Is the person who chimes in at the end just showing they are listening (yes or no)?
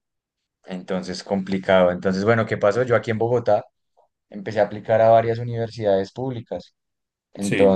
yes